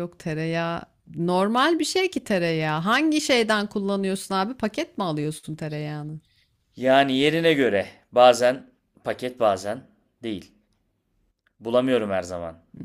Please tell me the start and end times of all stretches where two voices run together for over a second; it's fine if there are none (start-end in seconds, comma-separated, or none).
none